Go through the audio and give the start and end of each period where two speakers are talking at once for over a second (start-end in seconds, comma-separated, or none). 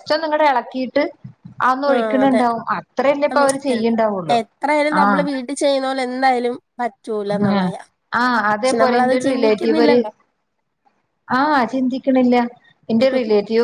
8.6-10.0